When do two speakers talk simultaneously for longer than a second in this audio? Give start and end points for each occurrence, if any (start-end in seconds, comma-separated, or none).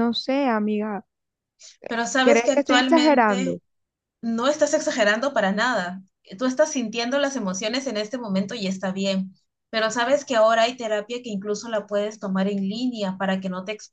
2.2-3.6